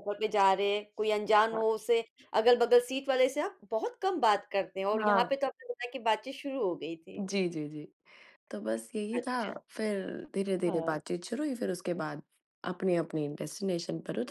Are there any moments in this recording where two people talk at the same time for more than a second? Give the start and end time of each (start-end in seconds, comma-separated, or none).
none